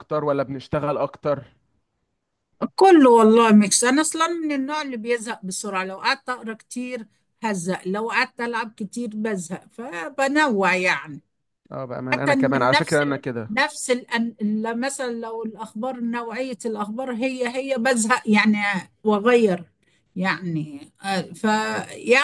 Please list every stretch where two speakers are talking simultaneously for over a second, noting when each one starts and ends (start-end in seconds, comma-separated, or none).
12.1-13.5